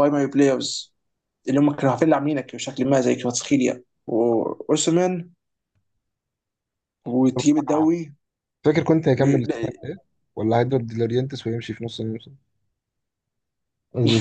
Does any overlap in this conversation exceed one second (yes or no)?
no